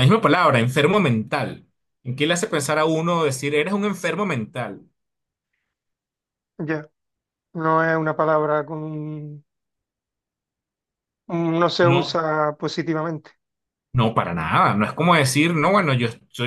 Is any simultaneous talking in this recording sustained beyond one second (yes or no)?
no